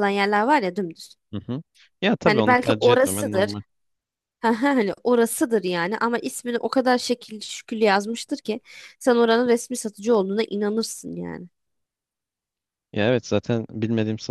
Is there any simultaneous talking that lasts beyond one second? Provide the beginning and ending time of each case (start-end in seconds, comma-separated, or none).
2.2-3.5